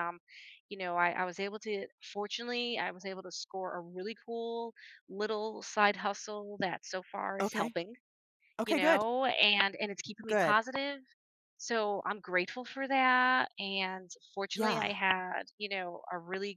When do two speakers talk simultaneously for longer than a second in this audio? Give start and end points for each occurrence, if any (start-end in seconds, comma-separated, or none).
none